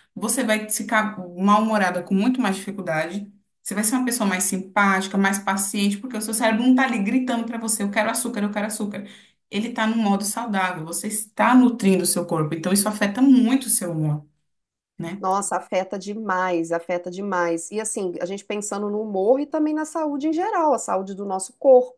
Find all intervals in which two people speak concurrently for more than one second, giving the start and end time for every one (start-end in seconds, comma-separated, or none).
none